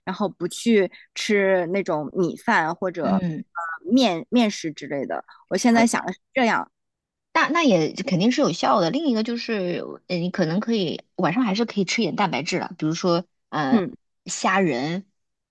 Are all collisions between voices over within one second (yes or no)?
yes